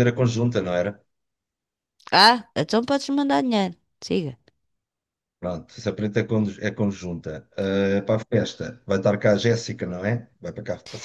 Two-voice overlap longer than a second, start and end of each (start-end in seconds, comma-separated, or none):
none